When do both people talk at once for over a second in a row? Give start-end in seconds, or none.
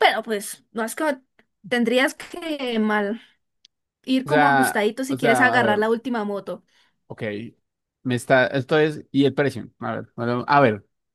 4.2-5.8